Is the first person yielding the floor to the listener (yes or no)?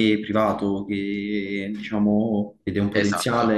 no